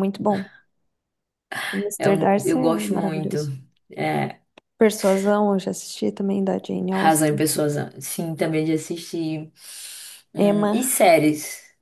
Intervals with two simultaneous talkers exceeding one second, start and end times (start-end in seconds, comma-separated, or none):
2.0-3.4